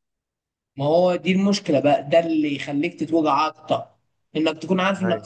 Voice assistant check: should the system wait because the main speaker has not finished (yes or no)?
yes